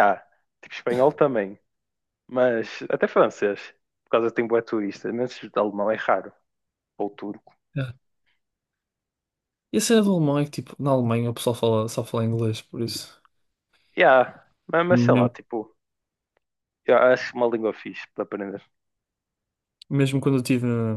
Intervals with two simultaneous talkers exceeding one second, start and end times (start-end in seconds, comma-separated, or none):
none